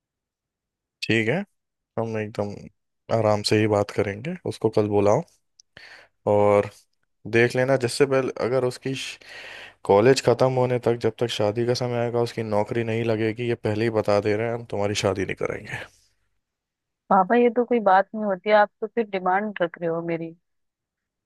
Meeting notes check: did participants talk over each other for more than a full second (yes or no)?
no